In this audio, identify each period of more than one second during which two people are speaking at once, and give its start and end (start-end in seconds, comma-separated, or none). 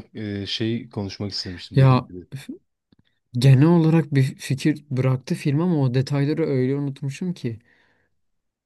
none